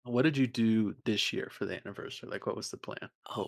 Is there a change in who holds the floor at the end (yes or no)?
yes